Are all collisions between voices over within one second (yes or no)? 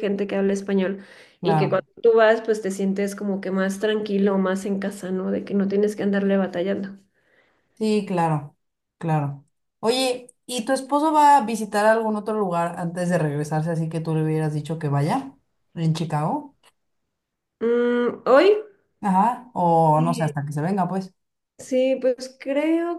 yes